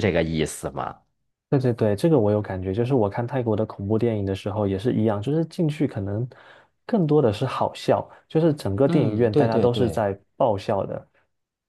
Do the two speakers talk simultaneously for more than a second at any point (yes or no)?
yes